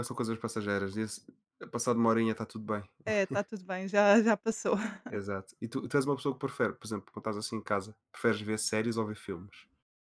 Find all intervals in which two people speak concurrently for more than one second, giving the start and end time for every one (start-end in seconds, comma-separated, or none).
none